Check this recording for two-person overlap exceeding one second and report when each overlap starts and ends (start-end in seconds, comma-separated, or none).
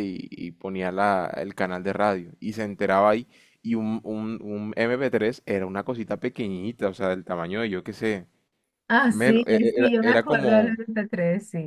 9.1-10.8